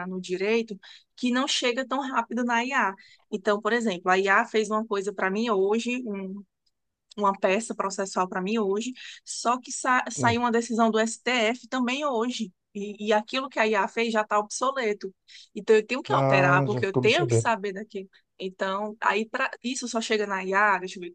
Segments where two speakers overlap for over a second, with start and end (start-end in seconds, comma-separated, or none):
16.1-17.5